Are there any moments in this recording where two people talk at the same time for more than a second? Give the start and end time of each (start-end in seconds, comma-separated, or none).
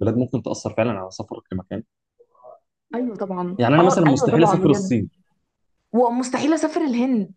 3.6-4.9